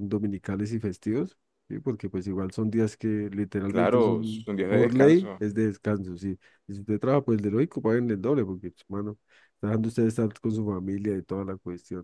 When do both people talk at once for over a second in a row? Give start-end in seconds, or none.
3.7-5.4